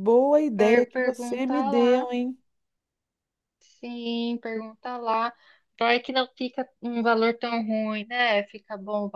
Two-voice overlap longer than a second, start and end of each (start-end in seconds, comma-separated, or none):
0.5-2.1